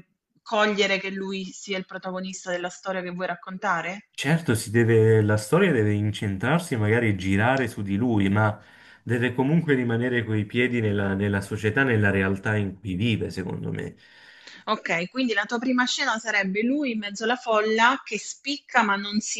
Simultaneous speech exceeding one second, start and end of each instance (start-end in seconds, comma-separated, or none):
none